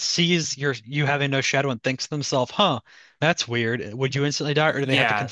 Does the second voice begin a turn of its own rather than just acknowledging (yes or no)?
yes